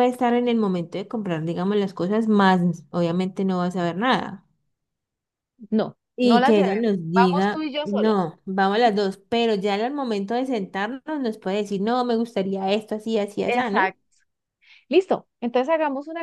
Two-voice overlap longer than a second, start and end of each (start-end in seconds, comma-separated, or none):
6.2-8.3